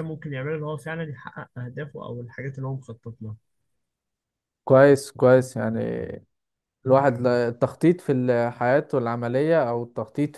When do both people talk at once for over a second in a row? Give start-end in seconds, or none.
none